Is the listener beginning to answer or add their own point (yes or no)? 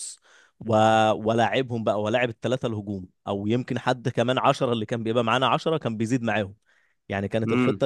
no